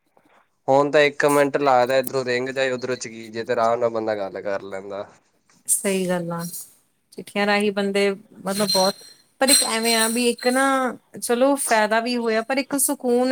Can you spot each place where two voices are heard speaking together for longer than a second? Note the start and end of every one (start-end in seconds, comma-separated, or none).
none